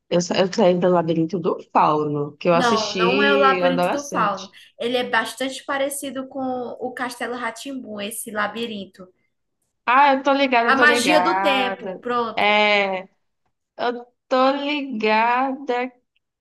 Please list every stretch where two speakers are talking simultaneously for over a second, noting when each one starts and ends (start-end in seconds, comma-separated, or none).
2.5-4.5, 10.7-12.6